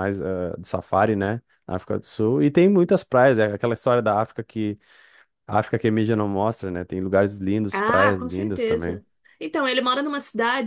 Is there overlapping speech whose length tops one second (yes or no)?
yes